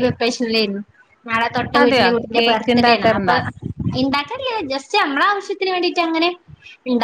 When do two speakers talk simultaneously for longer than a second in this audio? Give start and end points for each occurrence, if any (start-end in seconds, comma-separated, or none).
1.8-3.3